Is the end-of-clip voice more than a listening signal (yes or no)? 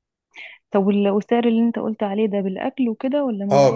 yes